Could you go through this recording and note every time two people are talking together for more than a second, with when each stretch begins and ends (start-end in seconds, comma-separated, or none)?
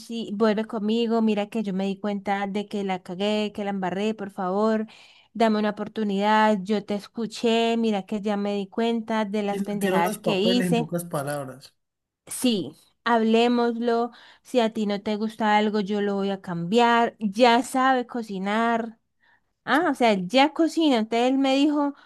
9.4-10.9